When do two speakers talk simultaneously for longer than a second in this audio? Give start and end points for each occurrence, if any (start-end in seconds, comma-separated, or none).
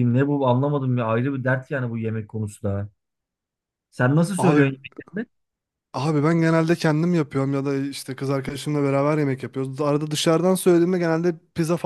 none